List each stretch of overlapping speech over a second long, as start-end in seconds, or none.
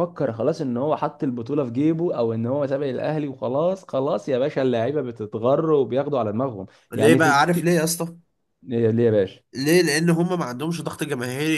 none